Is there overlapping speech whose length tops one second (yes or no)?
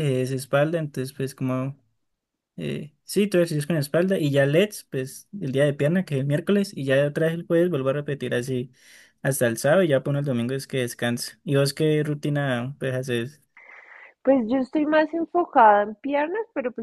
no